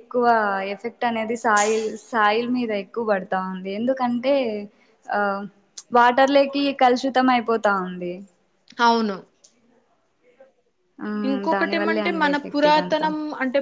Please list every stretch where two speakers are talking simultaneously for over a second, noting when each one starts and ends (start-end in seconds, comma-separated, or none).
11.3-13.1